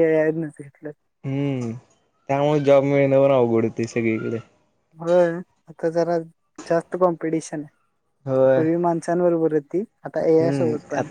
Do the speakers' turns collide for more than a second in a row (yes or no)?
no